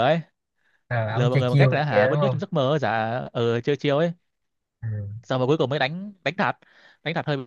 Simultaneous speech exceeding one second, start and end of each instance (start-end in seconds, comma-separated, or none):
1.1-2.4